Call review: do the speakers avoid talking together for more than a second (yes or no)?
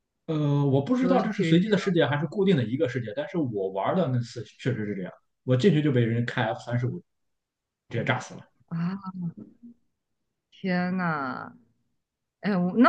no